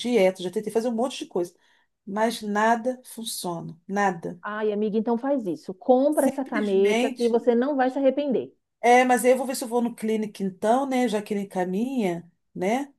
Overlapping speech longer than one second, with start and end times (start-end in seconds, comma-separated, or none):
6.1-7.3